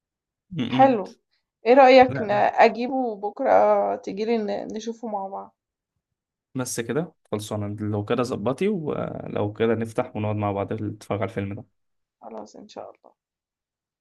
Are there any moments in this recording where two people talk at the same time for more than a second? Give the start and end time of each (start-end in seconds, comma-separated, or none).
none